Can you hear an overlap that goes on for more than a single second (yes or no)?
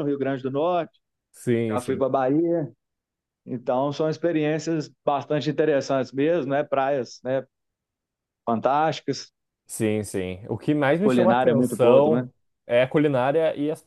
yes